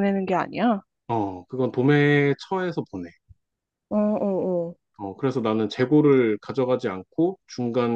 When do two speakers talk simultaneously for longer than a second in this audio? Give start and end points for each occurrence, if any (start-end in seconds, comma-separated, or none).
none